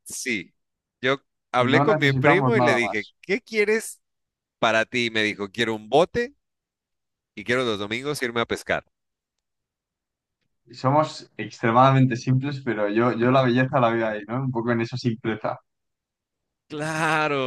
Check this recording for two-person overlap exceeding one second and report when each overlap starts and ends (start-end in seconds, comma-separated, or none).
1.6-3.1